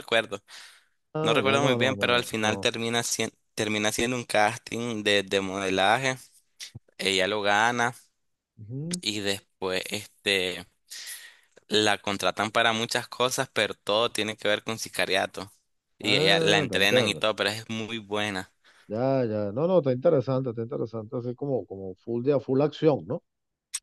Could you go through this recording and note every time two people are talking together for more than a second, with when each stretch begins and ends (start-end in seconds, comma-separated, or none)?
1.2-2.7, 16.0-17.2